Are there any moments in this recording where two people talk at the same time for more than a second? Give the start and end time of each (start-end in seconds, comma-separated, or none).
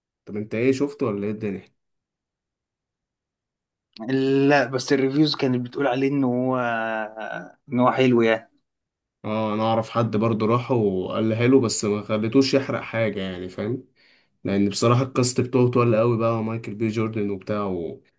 none